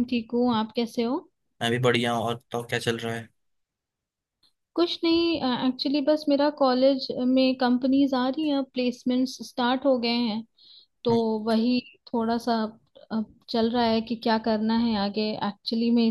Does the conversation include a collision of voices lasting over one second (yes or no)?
no